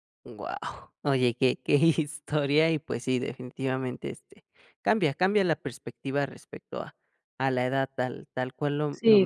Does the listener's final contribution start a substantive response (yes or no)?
no